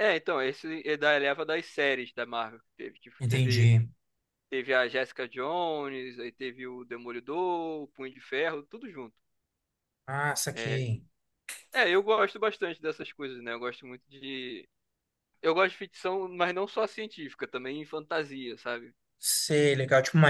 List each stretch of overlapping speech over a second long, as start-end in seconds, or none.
none